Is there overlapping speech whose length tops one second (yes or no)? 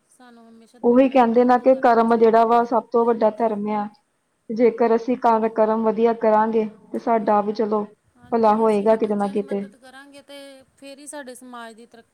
yes